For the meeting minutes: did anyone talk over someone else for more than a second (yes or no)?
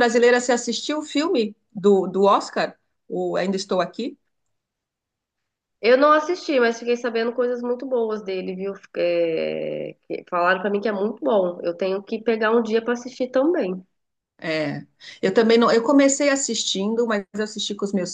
no